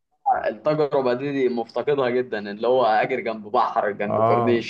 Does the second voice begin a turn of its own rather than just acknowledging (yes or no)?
yes